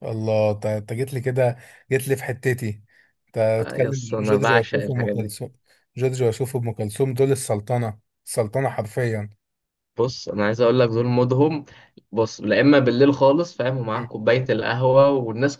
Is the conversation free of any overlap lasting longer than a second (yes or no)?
no